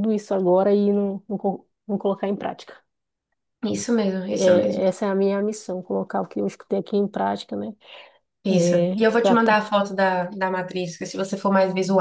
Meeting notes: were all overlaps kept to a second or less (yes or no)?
yes